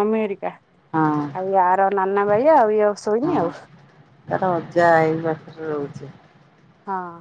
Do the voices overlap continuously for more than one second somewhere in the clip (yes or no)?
no